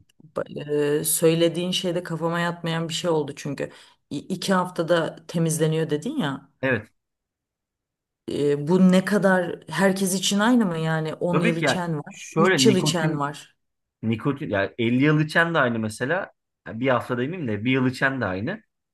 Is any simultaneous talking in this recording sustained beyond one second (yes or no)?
yes